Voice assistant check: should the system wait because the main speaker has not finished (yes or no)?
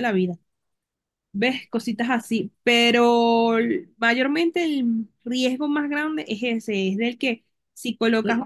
yes